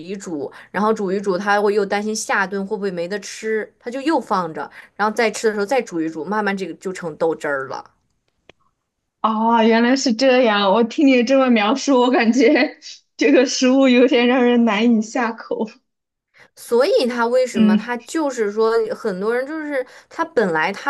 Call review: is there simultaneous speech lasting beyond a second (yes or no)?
no